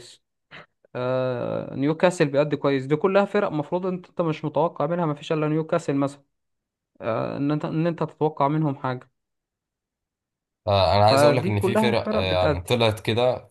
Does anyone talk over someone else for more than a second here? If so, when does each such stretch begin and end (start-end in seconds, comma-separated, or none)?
11.0-12.8